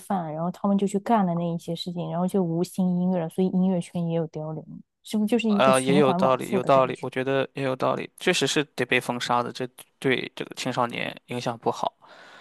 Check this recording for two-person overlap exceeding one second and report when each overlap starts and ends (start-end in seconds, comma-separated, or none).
5.6-7.1